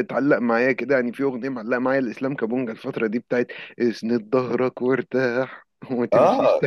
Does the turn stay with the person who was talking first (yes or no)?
no